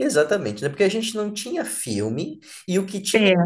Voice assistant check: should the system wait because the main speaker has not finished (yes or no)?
yes